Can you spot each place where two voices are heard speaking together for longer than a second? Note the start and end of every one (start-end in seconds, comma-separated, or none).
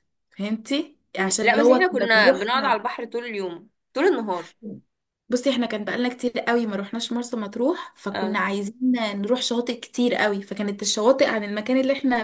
1.2-2.4